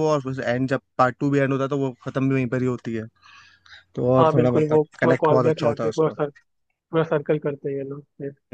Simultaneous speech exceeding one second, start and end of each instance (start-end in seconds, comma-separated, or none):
4.2-6.1